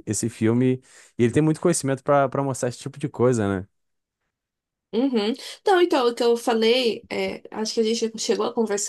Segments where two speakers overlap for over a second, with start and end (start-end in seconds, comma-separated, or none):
none